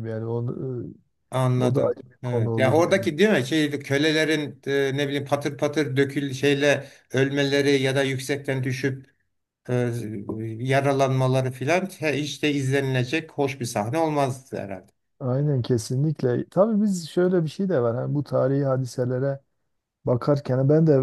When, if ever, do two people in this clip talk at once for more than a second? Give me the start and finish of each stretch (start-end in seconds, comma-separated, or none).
1.6-3.1